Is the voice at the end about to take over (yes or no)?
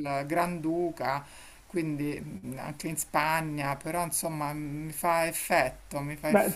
yes